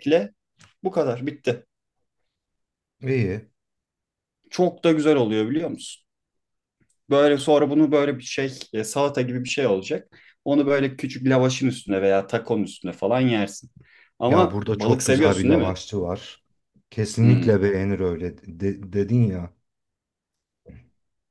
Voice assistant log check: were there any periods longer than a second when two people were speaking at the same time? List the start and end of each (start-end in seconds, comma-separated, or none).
14.3-15.8